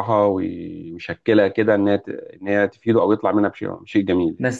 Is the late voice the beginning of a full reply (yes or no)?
yes